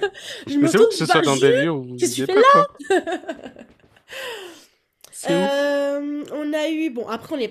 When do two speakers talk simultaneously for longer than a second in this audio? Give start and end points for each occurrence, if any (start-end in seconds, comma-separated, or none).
0.6-2.7